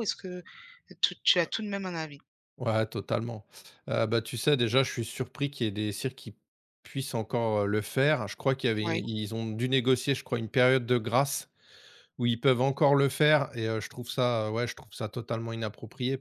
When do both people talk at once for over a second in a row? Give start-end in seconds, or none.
none